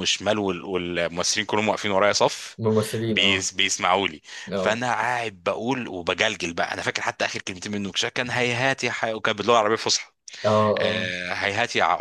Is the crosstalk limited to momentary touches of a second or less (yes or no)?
yes